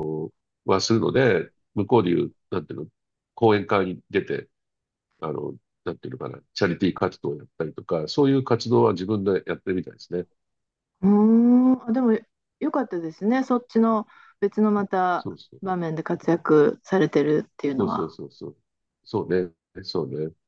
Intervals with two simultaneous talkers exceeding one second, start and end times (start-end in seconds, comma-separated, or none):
none